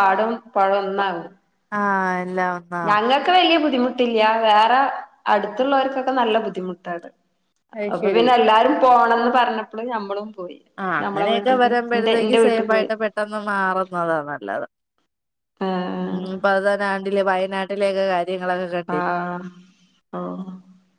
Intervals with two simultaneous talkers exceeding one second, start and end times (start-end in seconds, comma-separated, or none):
11.0-12.9